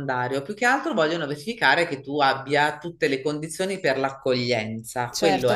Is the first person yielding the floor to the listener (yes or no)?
yes